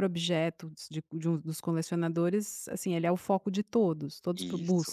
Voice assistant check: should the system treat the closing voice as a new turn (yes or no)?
yes